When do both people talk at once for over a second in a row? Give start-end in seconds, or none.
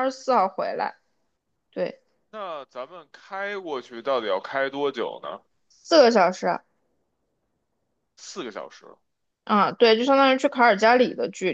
none